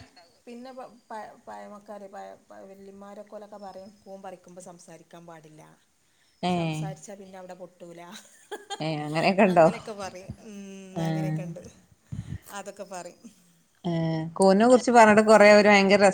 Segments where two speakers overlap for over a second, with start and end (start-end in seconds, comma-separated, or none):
none